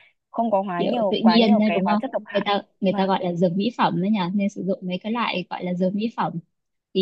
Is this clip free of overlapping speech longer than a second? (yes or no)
no